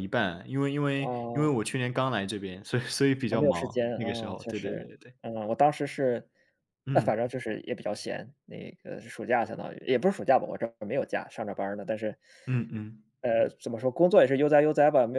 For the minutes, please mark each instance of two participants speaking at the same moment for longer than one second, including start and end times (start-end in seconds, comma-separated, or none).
3.3-5.1